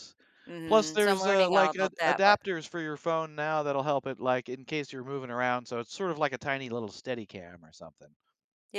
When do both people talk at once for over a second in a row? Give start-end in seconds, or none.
0.7-2.4